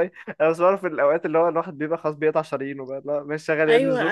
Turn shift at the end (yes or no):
yes